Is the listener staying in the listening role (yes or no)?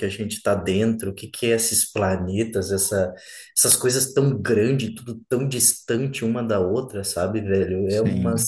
yes